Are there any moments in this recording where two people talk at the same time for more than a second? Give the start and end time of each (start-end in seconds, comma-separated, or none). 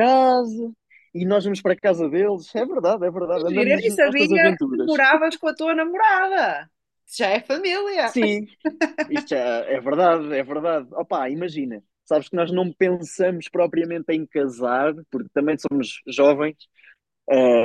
3.3-5.0